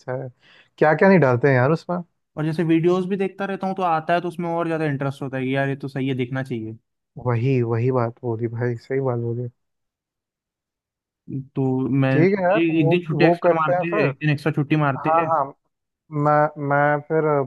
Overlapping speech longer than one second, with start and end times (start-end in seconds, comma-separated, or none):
12.1-14.1